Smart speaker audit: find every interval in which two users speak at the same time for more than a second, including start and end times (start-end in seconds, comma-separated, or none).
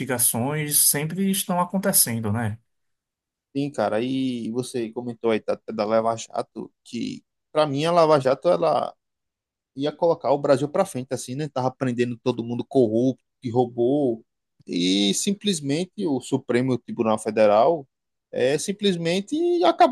none